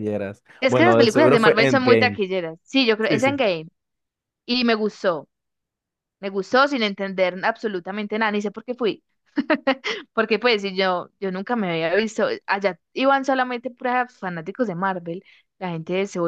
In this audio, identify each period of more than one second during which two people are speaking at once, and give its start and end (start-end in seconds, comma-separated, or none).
0.6-2.2